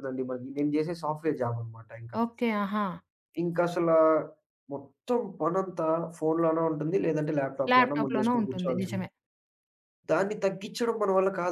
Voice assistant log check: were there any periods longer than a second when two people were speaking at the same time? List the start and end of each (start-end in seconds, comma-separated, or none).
7.7-9.1